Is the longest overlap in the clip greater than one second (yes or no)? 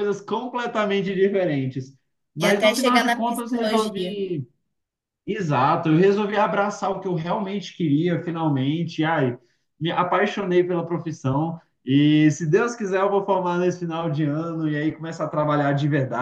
yes